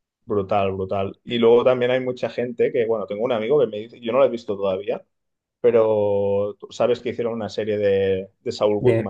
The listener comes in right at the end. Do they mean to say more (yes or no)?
yes